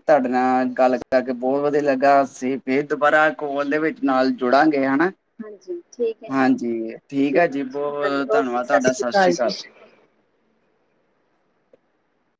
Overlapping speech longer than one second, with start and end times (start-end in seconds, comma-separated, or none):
7.3-8.6